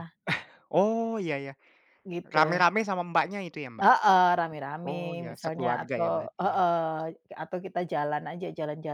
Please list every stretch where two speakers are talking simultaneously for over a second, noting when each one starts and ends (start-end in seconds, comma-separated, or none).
4.9-6.6